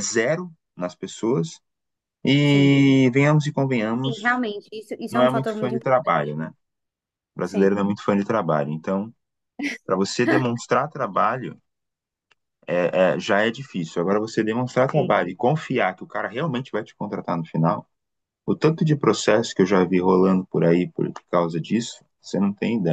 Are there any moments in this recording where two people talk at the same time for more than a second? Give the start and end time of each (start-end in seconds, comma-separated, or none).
5.1-6.4